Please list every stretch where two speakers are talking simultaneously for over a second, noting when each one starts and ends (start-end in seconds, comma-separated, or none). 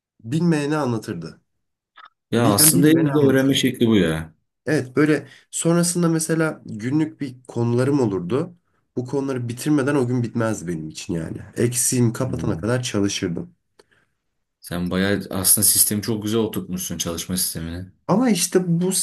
2.3-3.6